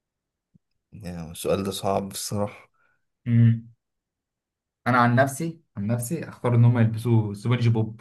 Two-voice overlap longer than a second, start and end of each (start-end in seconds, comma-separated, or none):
none